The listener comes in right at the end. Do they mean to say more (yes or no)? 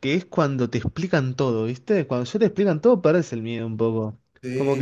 no